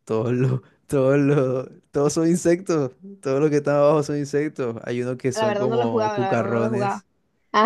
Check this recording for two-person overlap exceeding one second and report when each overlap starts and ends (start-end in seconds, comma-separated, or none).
5.3-7.0